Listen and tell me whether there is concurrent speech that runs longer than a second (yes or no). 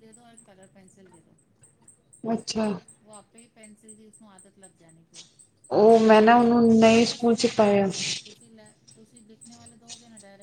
yes